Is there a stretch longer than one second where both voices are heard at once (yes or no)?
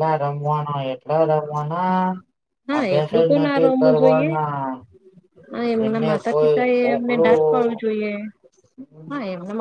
yes